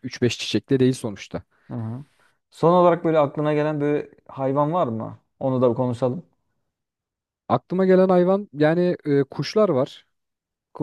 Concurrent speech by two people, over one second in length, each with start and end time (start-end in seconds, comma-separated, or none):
none